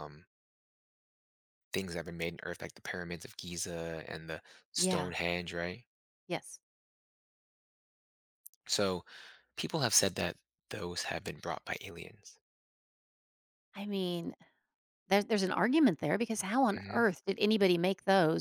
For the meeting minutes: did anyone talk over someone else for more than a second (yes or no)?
no